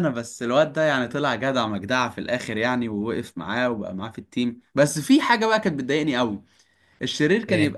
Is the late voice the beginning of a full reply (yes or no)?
no